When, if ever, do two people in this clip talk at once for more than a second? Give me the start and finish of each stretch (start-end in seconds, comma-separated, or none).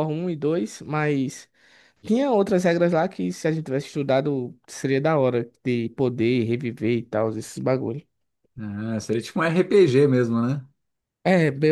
none